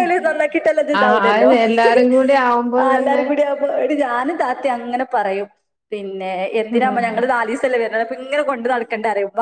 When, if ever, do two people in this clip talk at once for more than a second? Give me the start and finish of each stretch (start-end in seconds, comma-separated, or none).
none